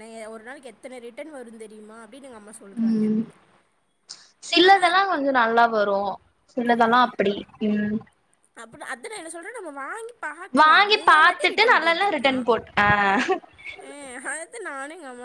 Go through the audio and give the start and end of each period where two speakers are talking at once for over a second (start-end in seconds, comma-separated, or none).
10.6-12.4